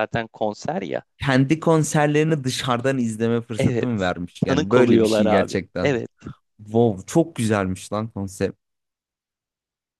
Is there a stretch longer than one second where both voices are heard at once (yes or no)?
yes